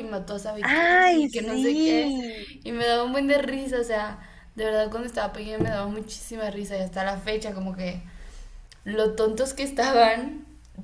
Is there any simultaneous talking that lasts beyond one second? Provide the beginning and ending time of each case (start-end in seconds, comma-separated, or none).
0.6-2.2